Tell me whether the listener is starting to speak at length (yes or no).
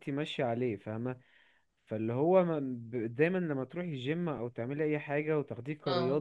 no